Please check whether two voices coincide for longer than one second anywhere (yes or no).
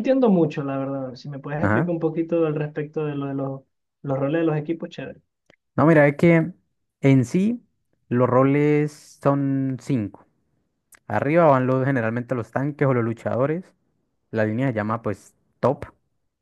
no